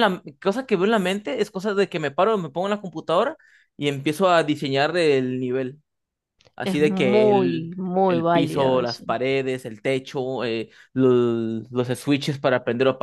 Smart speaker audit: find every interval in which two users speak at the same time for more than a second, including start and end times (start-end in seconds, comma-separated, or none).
6.6-9.0